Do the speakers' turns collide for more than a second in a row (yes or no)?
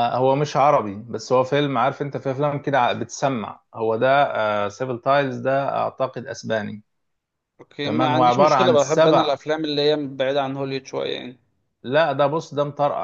yes